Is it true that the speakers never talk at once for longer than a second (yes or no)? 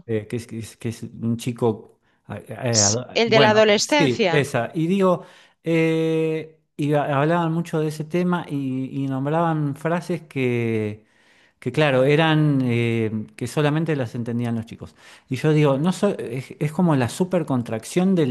no